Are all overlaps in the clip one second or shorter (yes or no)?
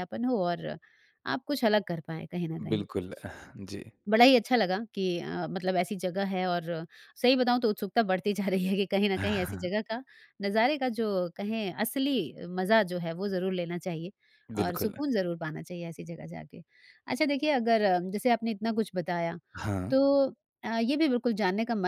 yes